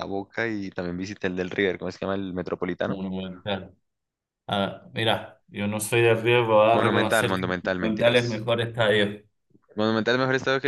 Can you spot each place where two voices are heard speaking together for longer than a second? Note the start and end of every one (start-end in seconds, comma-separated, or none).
6.7-8.5